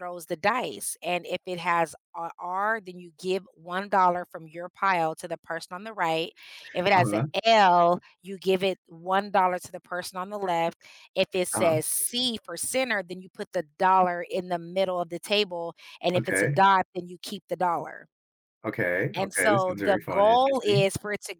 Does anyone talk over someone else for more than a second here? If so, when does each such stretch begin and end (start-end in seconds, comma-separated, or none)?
19.1-20.9